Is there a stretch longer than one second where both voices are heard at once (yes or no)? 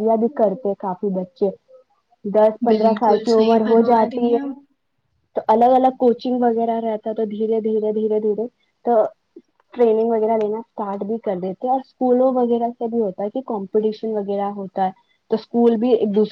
yes